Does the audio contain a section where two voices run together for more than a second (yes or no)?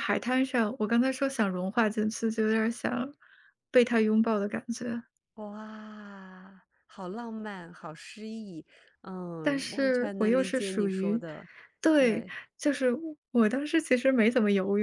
yes